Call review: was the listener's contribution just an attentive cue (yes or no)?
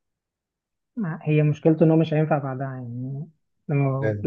yes